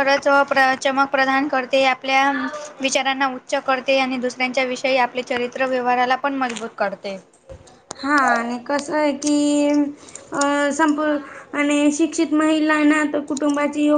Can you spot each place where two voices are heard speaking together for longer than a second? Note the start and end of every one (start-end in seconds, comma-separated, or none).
none